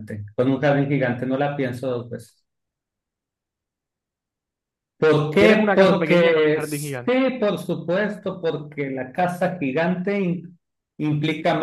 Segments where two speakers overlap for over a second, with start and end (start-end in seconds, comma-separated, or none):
5.3-7.2